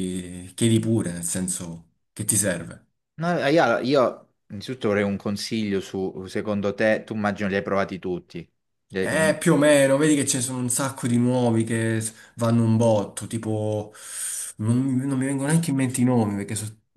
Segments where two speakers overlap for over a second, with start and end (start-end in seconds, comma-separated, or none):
none